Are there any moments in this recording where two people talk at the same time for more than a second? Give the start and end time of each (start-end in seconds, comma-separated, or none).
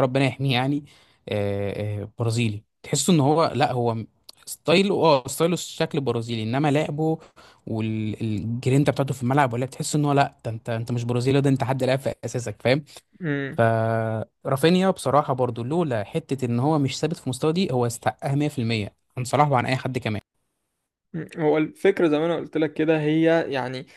none